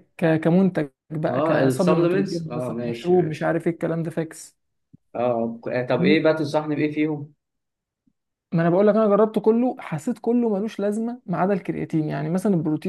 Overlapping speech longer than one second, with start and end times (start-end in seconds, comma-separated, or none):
1.3-3.5